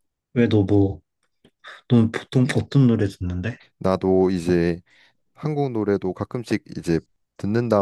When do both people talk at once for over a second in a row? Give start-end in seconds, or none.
none